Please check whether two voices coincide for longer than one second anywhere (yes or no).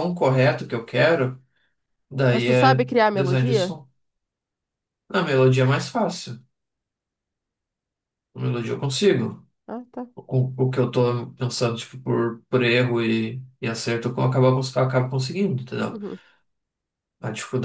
yes